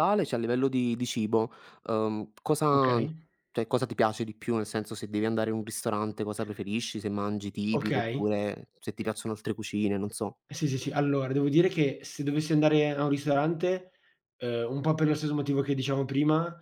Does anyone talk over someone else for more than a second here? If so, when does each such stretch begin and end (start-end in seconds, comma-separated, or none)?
none